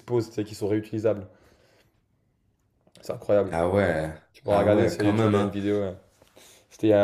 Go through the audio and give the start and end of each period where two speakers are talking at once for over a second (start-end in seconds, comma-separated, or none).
4.3-5.5